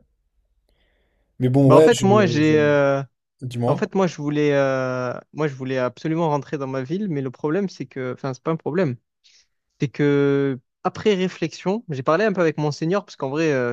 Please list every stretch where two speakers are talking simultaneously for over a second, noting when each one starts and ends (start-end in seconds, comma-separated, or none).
1.7-2.9